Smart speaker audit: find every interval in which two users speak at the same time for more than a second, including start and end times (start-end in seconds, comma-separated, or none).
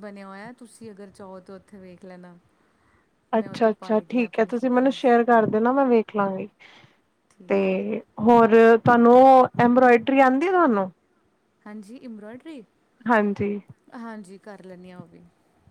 3.4-5.1